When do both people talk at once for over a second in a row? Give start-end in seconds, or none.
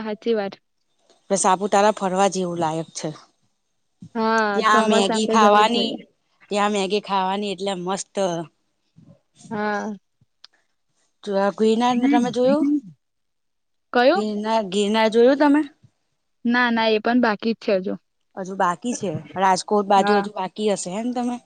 4.5-5.9